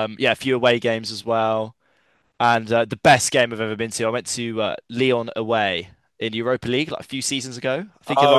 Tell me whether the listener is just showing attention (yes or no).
yes